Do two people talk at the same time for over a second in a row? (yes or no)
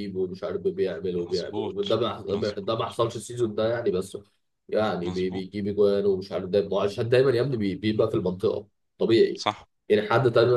yes